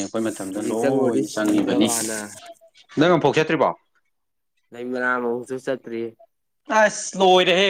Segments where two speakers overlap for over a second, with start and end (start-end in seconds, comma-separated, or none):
0.5-1.9